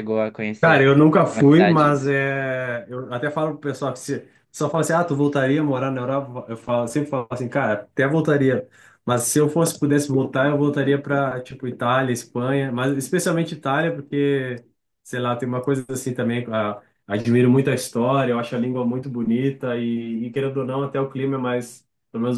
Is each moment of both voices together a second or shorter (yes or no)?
no